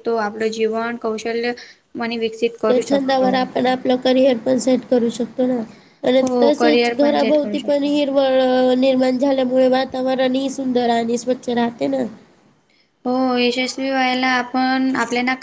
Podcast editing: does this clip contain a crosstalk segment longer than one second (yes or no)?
yes